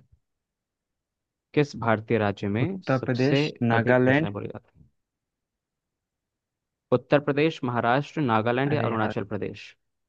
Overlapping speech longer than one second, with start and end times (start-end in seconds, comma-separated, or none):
2.7-4.3